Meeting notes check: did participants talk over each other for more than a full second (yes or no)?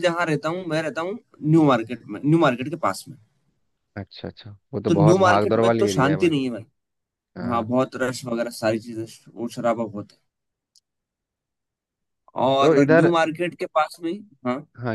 yes